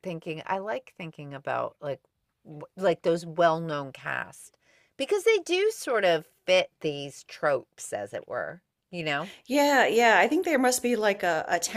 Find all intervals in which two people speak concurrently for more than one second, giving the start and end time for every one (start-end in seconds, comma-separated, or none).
none